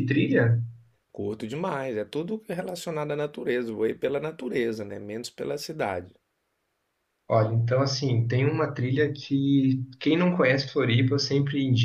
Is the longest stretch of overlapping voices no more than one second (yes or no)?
yes